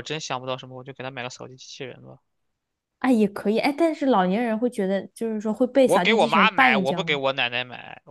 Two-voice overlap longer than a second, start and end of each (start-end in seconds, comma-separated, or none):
5.8-7.2